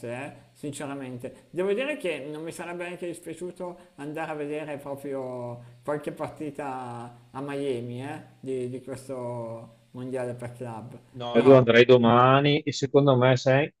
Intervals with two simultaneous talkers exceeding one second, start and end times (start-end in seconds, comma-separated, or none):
none